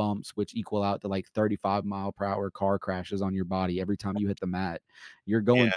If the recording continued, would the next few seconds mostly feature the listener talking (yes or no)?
no